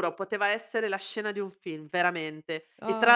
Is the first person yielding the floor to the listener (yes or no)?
no